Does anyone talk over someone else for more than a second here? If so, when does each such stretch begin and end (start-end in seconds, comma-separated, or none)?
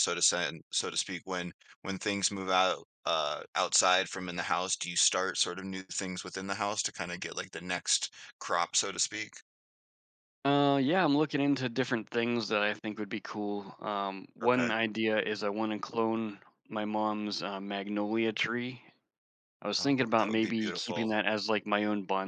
19.8-21.1